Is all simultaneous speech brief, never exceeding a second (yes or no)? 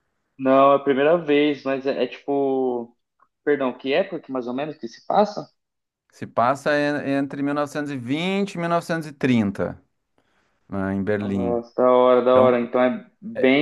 yes